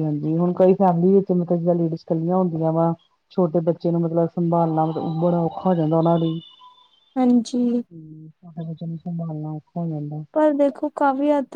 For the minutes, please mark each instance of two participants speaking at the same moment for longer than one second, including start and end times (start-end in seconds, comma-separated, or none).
none